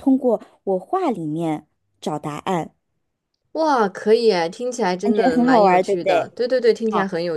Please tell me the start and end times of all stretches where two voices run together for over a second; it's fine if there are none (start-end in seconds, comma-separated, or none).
5.0-6.4